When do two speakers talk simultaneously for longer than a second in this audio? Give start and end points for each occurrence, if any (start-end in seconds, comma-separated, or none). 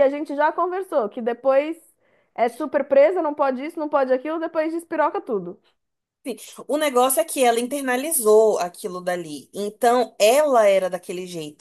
none